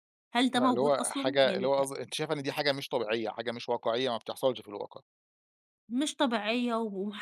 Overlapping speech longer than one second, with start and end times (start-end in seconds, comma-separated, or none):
0.6-1.9